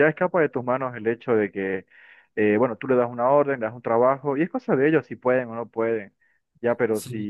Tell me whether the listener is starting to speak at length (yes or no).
no